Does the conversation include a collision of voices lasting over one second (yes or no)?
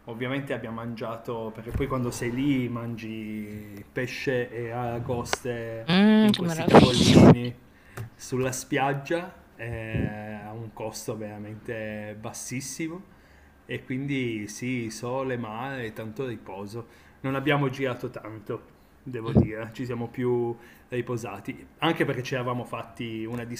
yes